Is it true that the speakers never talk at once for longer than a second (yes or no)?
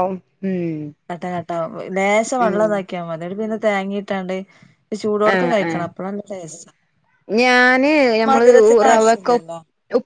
yes